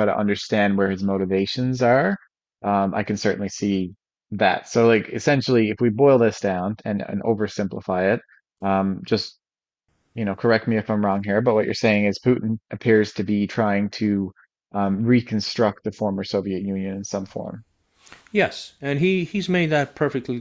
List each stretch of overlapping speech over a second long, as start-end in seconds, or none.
none